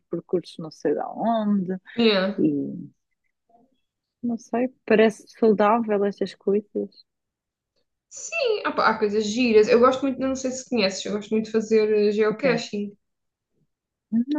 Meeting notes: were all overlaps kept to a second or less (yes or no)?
yes